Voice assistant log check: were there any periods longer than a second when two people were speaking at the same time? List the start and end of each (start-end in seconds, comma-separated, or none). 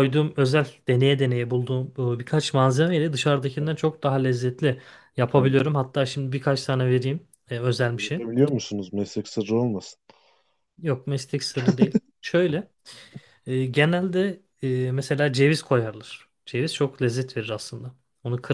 none